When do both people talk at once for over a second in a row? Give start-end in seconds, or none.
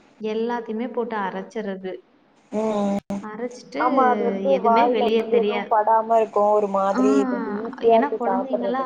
none